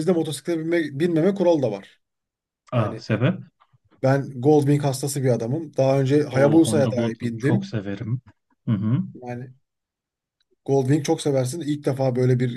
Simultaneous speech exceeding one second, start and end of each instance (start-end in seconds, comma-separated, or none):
6.3-7.7